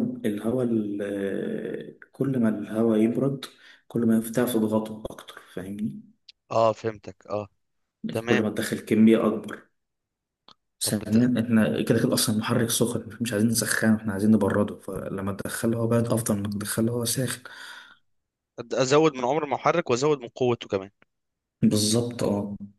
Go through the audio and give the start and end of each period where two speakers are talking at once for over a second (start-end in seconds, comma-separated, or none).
none